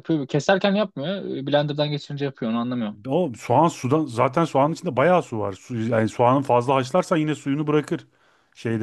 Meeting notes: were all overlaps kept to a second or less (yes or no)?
yes